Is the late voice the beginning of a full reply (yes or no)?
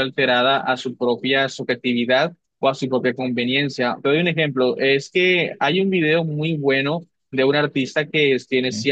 no